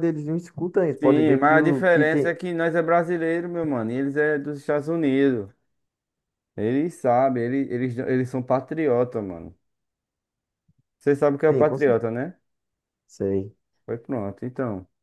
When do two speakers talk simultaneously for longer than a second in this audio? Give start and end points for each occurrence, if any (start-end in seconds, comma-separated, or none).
1.0-2.3